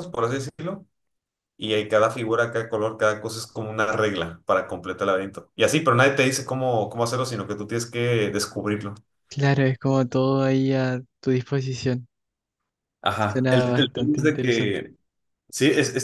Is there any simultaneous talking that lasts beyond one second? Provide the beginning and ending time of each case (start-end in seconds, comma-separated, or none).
13.2-14.8